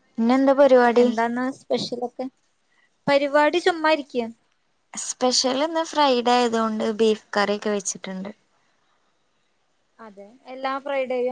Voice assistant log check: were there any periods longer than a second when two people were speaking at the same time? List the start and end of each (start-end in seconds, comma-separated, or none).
none